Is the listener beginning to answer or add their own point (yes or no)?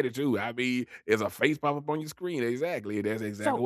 yes